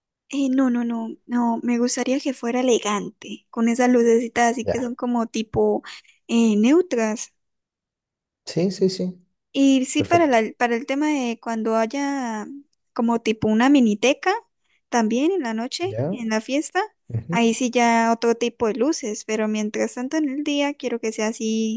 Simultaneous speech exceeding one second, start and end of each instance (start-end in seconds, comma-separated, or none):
none